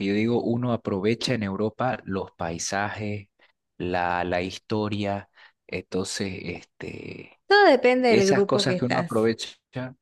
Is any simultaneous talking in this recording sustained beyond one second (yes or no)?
yes